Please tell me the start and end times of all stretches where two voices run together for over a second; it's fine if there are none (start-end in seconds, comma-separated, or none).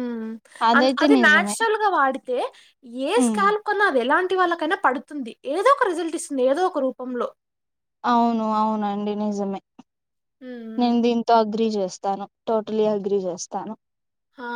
none